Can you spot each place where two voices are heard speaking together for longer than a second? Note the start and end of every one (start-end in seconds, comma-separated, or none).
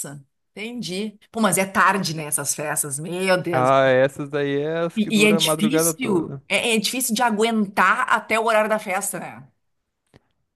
5.0-6.4